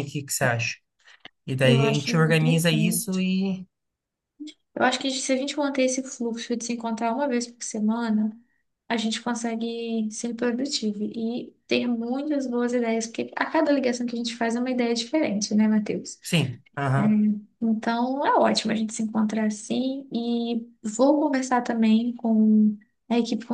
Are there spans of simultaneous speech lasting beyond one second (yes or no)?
yes